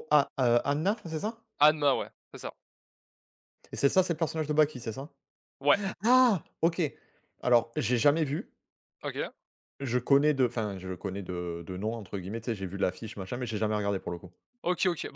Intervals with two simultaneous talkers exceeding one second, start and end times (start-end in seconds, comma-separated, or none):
none